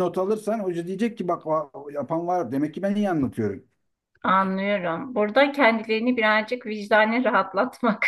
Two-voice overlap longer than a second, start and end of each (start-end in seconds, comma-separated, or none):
none